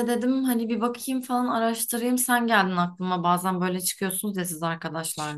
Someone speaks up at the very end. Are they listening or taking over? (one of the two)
taking over